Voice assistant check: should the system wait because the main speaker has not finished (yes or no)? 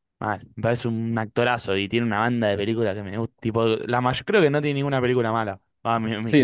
no